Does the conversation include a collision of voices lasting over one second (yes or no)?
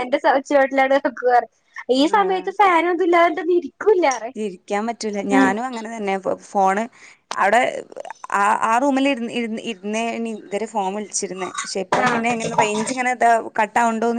no